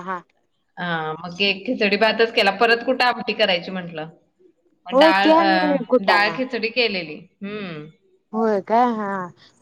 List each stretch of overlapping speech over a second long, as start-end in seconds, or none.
none